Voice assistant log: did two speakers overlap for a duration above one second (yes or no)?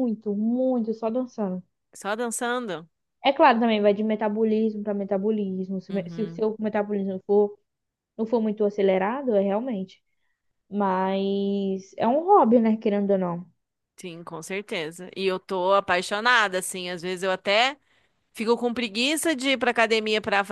no